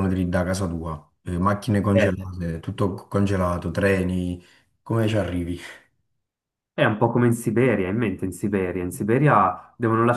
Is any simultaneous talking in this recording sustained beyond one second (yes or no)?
no